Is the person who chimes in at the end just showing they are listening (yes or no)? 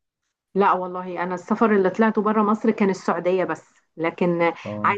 yes